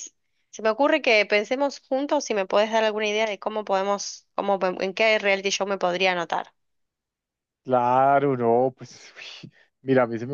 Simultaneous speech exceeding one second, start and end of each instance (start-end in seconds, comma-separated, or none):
none